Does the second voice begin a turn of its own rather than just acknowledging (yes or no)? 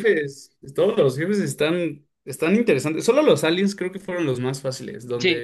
yes